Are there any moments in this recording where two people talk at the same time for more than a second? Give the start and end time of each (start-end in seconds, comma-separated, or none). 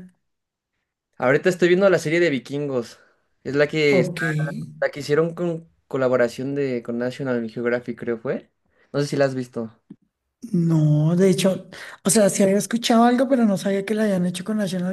none